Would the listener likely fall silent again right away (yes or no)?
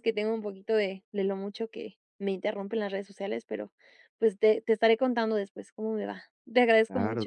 no